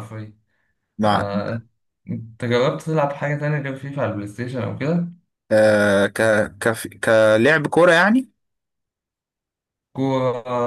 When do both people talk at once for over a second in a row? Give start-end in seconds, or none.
none